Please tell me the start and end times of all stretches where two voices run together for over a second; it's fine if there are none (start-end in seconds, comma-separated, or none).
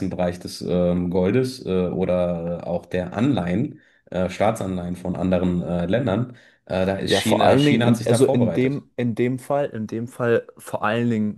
7.0-8.8